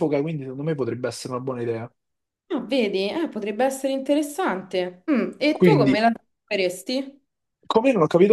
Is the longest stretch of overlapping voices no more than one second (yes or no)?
yes